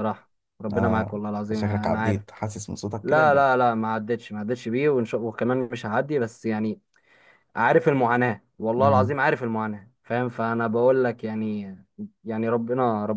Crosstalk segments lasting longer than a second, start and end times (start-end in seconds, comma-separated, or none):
0.7-2.2